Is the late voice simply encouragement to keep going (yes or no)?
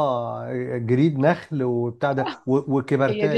yes